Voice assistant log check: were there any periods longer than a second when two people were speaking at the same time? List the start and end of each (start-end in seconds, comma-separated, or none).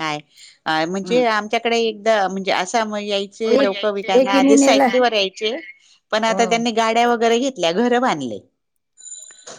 3.5-4.8